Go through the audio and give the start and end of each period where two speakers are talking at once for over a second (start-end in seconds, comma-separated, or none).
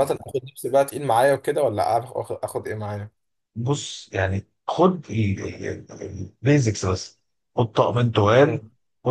none